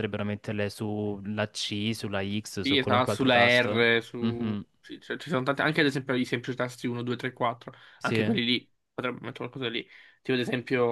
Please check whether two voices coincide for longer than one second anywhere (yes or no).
yes